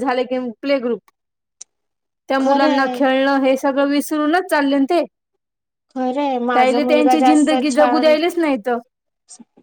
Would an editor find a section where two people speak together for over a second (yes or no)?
yes